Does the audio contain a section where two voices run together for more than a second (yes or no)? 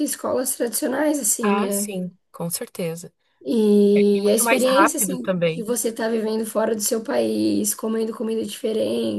yes